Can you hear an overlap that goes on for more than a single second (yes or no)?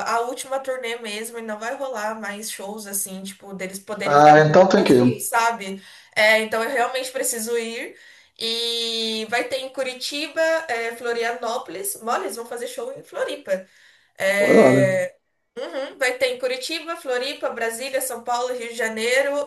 yes